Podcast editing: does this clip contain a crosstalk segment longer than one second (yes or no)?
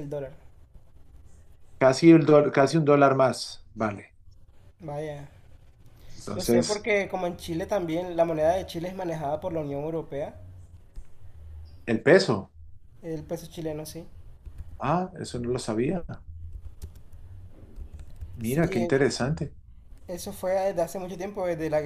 no